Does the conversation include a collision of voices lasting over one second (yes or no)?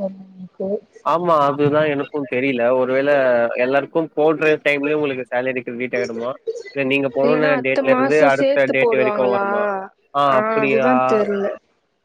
yes